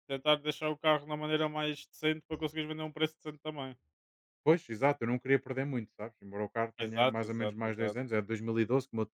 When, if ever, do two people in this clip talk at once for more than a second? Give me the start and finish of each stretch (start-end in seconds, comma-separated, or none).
6.8-8.0